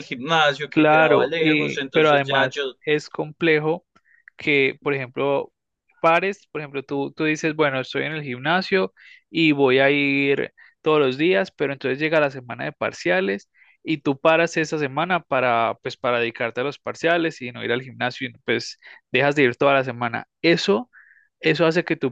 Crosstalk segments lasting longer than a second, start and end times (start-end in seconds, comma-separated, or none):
0.7-2.8